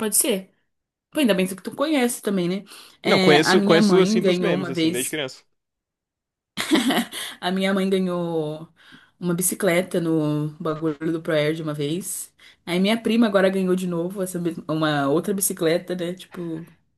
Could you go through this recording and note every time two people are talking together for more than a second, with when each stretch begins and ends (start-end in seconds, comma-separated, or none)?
3.0-5.2